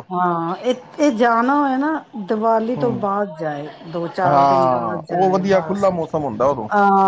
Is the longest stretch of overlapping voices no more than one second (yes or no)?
no